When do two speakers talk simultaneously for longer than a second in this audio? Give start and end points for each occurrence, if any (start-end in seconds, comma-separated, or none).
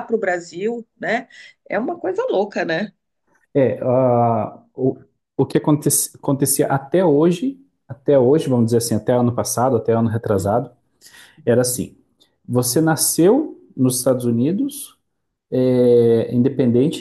none